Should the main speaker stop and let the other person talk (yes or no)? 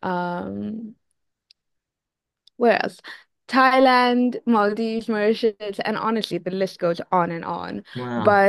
no